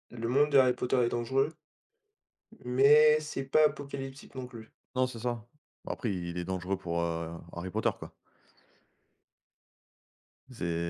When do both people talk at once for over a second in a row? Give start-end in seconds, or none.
none